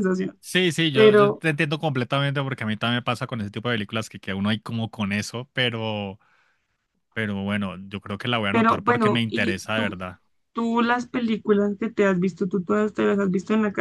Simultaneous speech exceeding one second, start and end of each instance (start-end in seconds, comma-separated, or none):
8.5-9.9